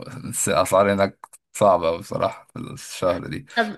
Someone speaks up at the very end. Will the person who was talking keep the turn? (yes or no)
yes